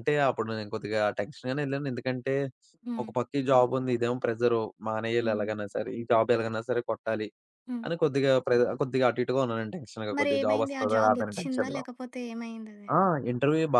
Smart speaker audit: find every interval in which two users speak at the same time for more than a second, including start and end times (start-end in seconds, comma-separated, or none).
10.2-11.8